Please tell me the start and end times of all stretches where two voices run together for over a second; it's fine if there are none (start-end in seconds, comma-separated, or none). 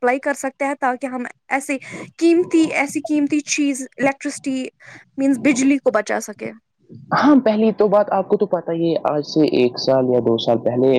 none